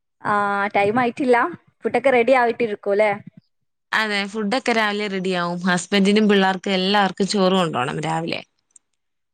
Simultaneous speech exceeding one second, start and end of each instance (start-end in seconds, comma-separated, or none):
none